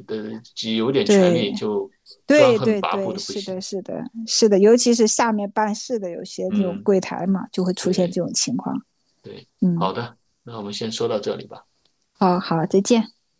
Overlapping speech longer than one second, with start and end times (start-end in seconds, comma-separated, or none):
2.3-3.6